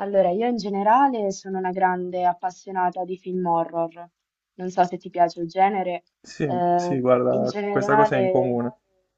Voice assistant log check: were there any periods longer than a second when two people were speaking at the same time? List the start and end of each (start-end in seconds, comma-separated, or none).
6.4-8.6